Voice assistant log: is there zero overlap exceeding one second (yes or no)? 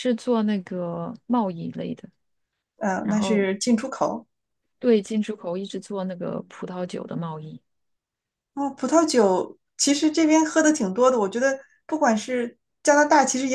yes